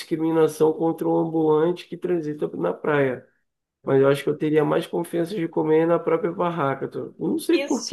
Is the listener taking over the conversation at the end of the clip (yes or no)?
yes